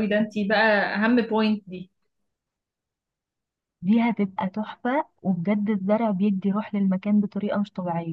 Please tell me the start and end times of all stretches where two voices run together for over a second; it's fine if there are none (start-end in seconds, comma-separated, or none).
none